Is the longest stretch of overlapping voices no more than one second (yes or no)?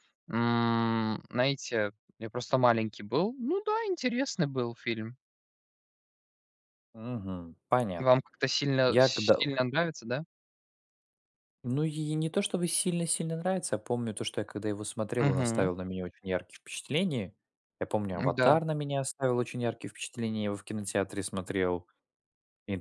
yes